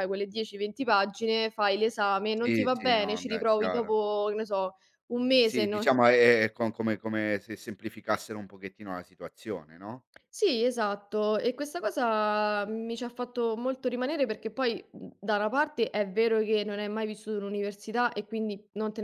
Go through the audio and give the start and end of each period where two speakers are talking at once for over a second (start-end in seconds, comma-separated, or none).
2.4-4.0